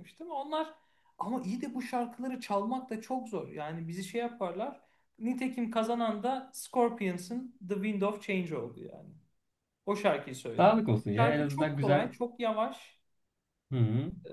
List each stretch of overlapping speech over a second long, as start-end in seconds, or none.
10.6-12.1